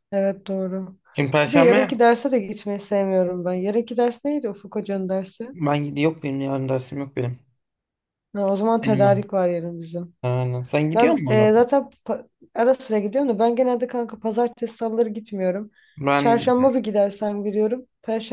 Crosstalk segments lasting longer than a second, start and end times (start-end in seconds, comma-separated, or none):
none